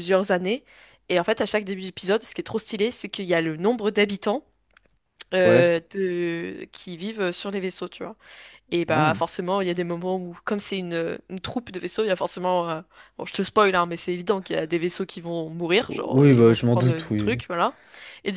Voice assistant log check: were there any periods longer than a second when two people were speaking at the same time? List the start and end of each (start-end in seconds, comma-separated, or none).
15.9-17.4